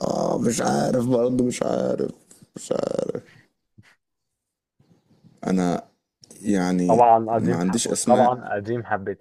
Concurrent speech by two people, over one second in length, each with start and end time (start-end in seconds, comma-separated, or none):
6.9-8.4